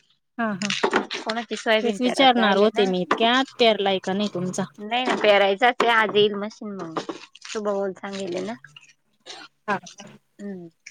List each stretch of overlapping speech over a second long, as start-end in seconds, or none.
1.2-2.8